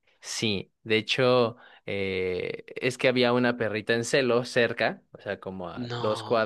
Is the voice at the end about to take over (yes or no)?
no